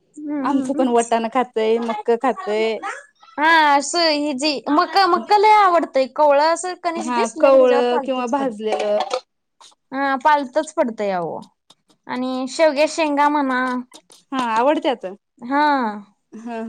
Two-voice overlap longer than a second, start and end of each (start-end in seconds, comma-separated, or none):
7.0-8.5